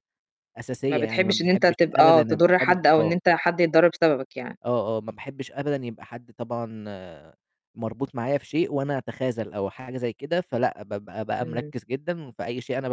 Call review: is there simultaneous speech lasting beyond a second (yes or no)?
yes